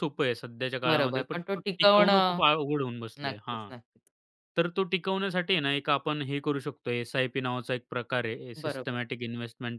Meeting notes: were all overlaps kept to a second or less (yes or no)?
no